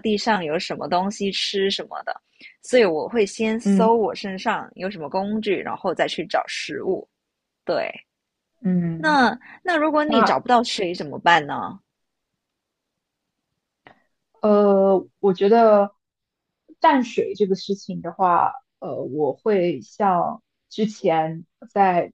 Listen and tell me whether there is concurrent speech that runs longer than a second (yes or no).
no